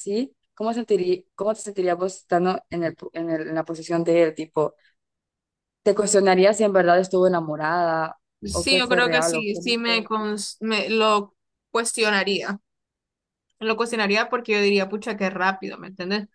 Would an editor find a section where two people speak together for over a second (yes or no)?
yes